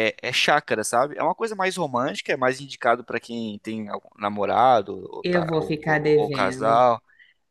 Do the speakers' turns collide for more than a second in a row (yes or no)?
yes